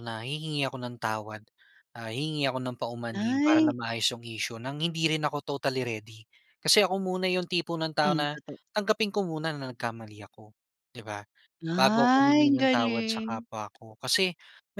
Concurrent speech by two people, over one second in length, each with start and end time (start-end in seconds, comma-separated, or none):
11.8-13.4